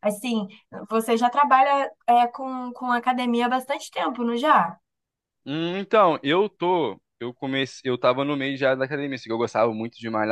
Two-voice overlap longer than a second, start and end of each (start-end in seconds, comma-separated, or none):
none